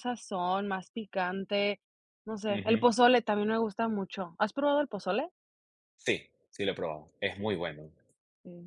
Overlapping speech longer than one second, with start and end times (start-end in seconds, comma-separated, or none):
none